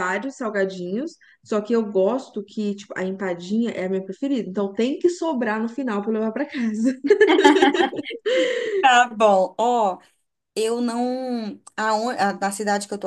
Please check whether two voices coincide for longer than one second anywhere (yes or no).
no